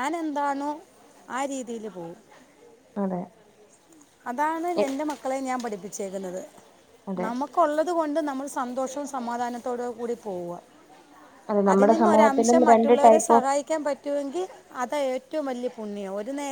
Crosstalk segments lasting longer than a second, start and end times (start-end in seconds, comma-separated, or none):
11.7-13.4